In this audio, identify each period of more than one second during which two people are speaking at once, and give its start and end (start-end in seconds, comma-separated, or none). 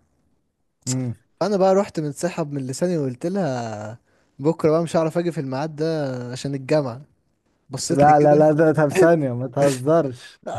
none